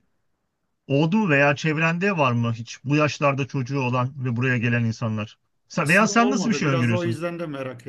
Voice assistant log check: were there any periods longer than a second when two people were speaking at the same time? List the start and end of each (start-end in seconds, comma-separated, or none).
5.7-7.2